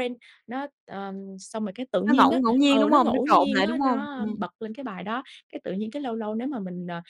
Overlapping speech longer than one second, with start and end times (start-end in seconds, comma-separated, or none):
2.1-4.4